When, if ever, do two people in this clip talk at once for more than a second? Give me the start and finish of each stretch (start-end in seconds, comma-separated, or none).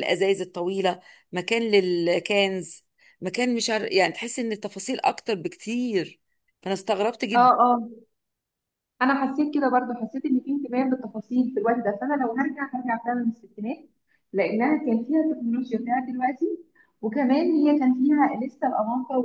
none